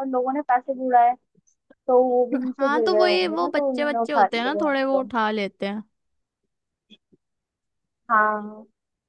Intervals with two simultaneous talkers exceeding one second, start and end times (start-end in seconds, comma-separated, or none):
2.6-5.0